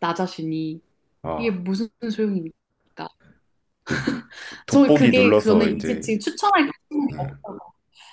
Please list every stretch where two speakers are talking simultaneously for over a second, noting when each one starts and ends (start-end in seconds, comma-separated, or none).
4.7-6.1